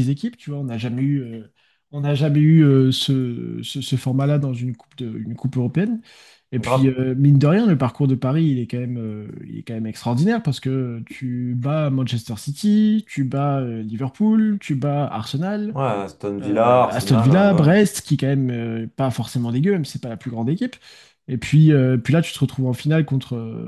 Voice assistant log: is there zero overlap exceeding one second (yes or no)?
no